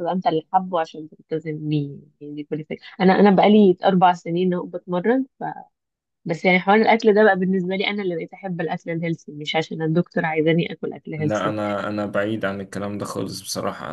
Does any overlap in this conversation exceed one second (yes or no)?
no